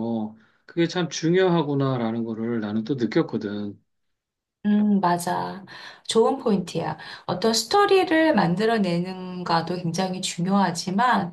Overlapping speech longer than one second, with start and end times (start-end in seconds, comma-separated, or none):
none